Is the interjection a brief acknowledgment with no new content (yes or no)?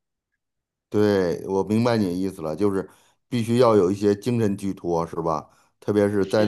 yes